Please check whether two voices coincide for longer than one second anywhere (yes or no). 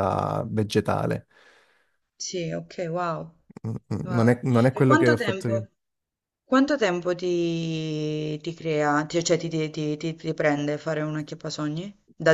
yes